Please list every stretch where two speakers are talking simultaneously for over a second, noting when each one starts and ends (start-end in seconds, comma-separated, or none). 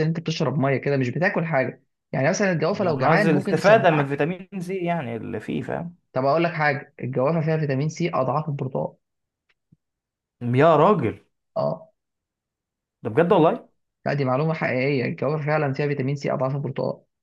2.7-4.2